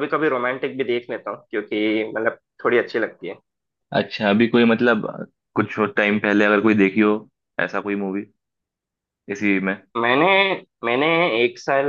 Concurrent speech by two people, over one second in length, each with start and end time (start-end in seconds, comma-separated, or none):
none